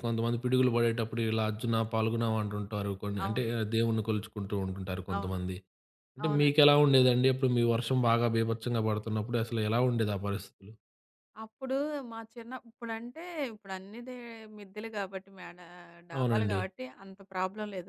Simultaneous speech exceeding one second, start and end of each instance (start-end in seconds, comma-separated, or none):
none